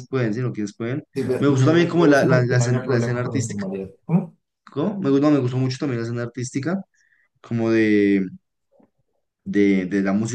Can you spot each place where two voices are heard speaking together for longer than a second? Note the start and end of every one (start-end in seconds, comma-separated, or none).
1.1-3.6